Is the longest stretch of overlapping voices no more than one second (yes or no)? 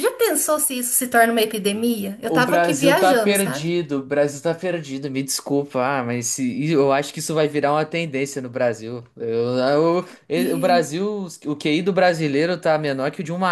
no